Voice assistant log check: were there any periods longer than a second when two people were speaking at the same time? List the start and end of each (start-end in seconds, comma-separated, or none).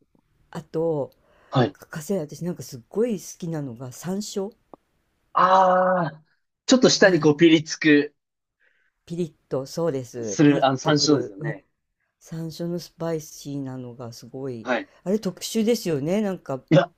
10.2-11.6